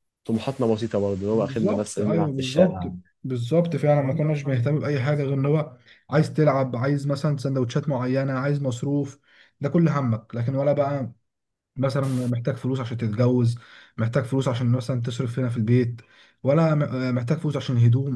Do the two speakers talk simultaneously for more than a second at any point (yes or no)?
yes